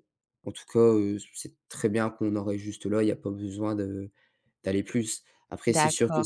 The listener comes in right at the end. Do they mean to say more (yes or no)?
yes